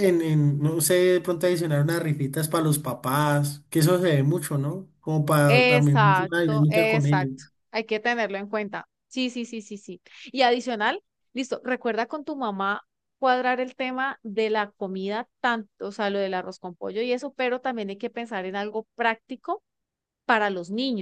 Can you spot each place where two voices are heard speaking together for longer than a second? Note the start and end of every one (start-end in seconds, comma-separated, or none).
5.5-7.3